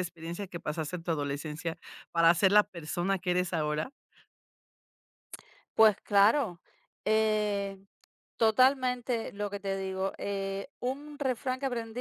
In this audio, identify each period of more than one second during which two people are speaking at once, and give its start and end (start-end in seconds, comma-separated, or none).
none